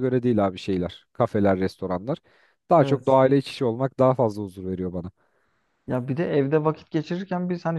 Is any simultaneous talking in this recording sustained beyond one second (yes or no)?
no